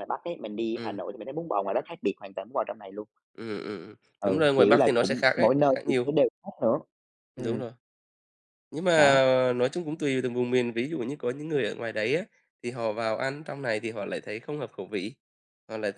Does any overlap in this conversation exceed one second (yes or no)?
yes